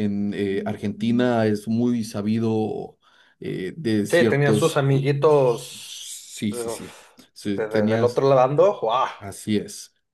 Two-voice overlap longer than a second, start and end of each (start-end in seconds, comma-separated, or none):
4.1-8.2